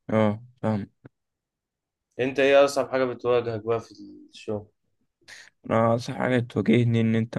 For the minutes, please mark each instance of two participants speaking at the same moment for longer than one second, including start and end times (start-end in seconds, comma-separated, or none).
none